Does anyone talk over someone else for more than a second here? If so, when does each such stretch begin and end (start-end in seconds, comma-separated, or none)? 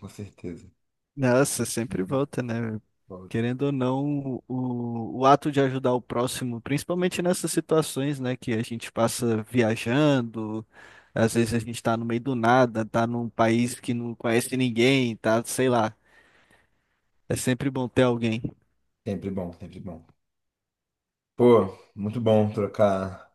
none